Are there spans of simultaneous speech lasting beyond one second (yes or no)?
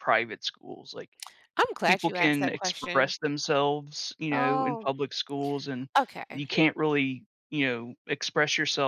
yes